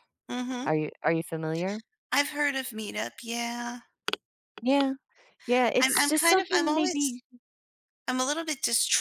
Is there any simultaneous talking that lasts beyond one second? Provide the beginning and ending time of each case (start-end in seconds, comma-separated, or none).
5.8-7.2